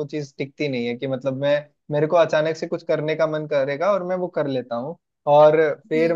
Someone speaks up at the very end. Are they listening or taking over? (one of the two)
listening